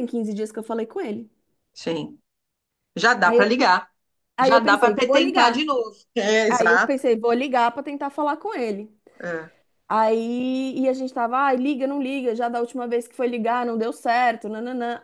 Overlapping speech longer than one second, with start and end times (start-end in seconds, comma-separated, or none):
4.4-5.7